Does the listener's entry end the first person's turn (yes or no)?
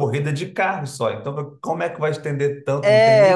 yes